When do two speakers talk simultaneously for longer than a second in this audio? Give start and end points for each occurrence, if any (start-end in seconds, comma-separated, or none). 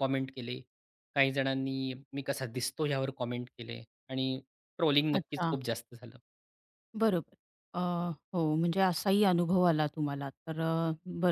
none